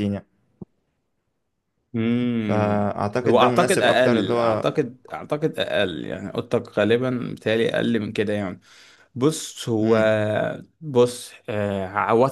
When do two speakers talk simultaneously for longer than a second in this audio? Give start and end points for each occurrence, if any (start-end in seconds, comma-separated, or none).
2.4-4.7